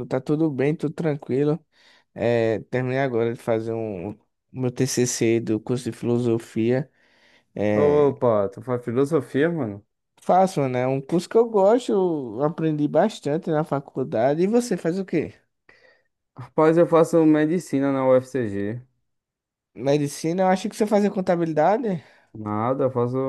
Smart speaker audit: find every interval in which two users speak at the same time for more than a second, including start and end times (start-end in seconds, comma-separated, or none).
none